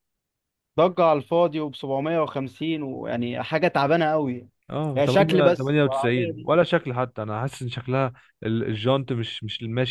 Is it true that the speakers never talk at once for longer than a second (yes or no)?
no